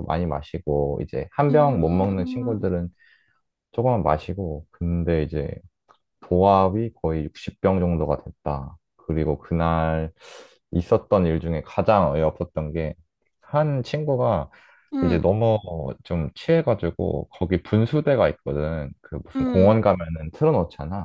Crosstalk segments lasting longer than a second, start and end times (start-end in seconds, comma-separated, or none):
1.5-2.7